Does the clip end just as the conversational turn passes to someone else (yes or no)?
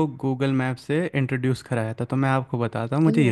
no